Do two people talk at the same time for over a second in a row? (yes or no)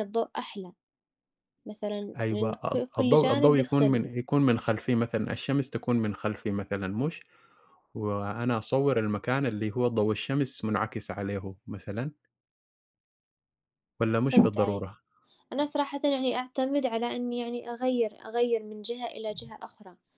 yes